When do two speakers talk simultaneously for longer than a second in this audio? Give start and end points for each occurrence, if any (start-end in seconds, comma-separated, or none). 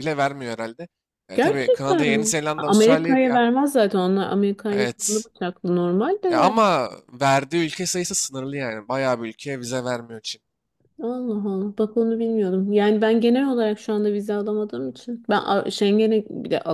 1.3-3.4